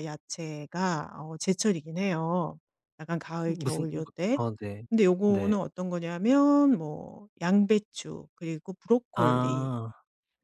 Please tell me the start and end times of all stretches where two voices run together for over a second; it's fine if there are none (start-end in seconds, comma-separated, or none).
none